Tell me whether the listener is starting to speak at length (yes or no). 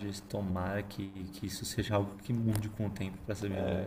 yes